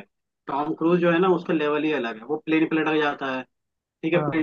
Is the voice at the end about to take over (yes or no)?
no